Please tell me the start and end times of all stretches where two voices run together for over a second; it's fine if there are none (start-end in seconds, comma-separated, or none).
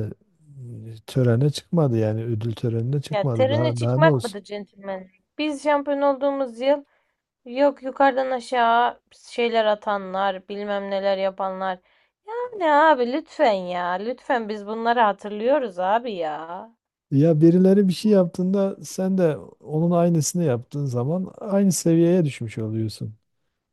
3.1-4.4